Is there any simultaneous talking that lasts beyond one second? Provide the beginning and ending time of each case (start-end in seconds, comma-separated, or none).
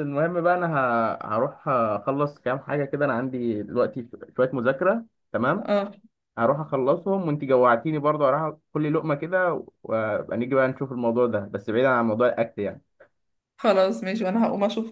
none